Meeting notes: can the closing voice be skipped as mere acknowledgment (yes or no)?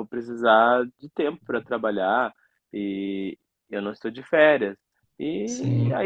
yes